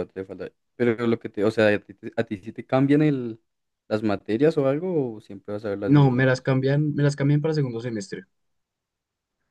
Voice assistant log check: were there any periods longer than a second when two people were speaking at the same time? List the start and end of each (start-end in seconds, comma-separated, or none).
none